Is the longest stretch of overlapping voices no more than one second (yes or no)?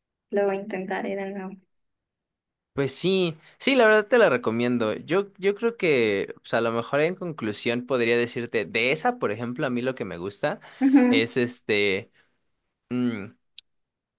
yes